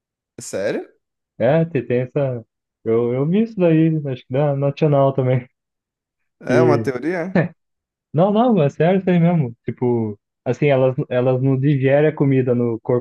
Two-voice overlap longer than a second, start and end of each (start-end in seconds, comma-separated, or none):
none